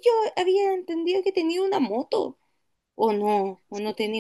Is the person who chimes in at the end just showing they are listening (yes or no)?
no